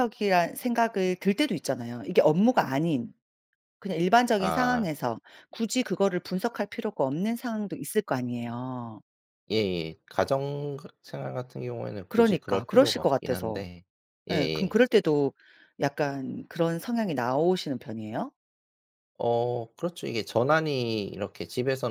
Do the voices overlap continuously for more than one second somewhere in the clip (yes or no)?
yes